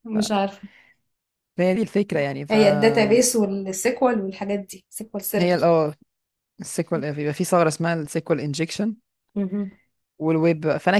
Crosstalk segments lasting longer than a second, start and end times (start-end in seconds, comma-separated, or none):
none